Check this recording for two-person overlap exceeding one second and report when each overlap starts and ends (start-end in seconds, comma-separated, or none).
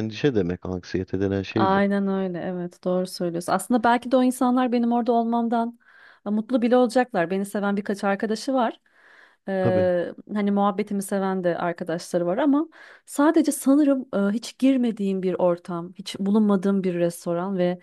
none